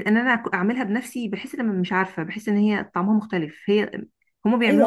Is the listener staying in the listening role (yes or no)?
no